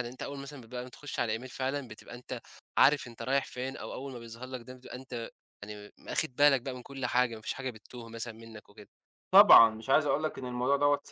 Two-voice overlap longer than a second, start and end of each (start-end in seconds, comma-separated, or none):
none